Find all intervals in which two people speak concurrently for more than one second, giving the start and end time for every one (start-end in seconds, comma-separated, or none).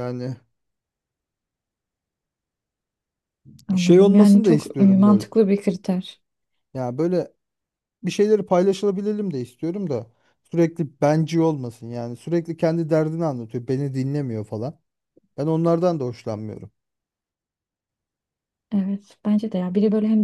3.8-5.2